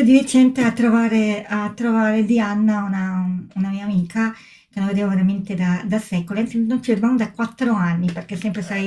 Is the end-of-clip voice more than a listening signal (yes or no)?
no